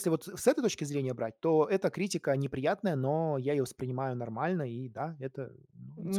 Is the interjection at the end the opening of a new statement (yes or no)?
yes